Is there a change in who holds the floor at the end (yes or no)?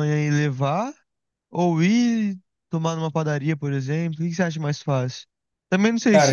no